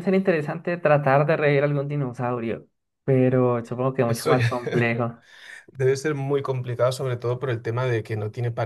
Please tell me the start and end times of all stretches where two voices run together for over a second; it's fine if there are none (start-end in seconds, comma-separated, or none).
none